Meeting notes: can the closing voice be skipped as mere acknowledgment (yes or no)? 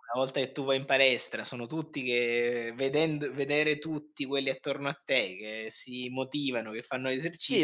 no